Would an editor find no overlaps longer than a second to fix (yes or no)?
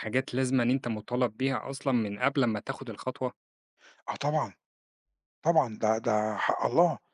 yes